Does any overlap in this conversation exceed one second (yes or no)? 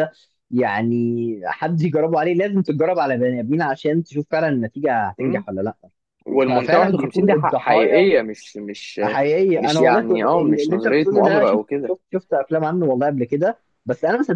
yes